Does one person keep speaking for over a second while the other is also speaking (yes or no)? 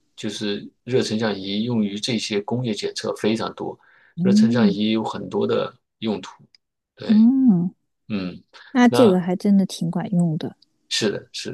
no